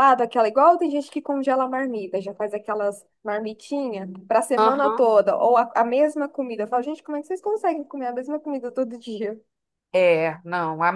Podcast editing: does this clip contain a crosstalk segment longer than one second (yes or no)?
no